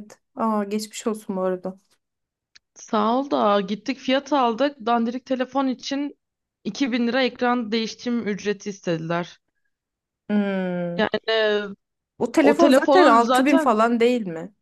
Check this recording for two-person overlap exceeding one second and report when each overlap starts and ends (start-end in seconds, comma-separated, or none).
12.4-13.8